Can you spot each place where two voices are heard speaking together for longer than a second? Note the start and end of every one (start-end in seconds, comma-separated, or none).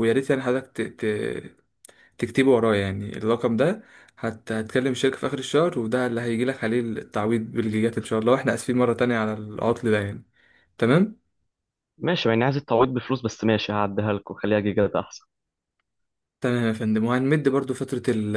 none